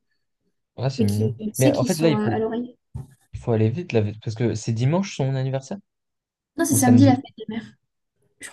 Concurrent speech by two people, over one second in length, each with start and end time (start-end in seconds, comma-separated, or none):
1.0-2.3